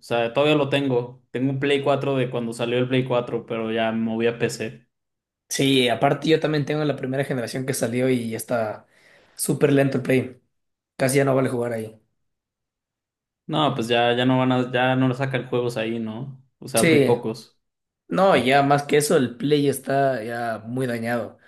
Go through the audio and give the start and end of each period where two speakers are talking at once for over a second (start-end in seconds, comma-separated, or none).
none